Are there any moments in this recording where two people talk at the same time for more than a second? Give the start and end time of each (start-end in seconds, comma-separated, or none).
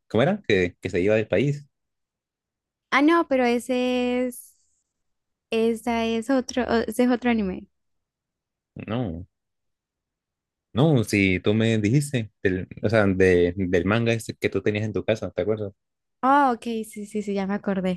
none